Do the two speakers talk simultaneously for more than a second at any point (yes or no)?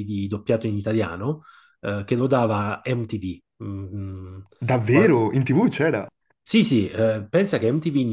no